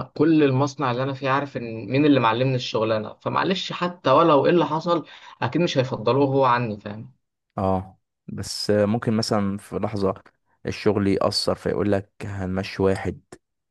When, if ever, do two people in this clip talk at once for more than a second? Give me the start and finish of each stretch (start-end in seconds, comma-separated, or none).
none